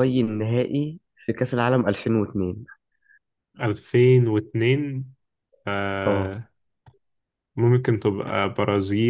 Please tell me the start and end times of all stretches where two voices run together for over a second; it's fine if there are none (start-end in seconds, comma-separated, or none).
none